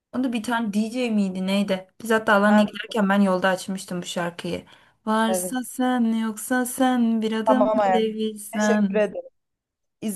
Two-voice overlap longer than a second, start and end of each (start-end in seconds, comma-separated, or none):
7.5-9.0